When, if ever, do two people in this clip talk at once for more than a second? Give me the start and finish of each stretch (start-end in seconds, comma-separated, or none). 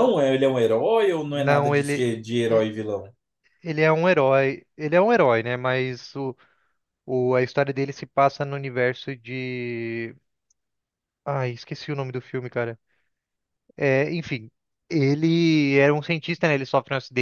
1.3-2.6